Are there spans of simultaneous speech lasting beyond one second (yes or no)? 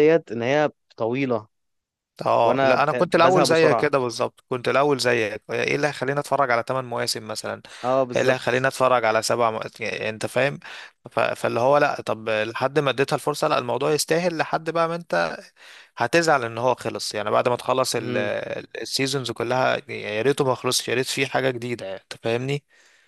yes